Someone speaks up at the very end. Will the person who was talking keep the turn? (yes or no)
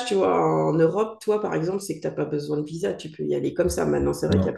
yes